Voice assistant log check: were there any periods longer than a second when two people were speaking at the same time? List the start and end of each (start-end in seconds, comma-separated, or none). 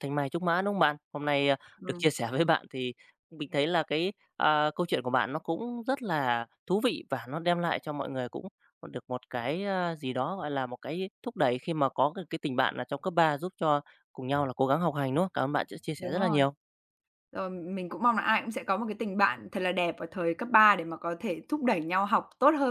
none